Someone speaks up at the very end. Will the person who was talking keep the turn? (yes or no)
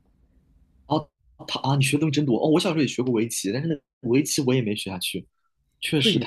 no